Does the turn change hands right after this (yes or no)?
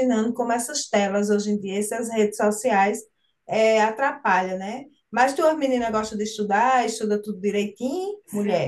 yes